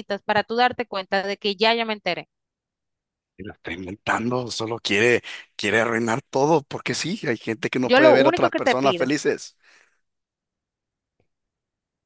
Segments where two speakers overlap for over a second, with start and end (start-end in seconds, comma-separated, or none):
7.8-9.1